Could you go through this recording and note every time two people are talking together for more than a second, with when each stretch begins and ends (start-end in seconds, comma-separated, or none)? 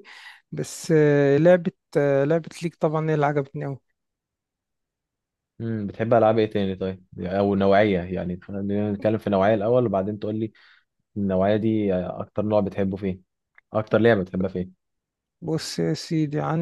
none